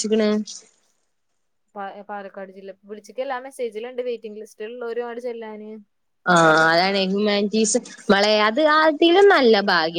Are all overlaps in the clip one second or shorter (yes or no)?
yes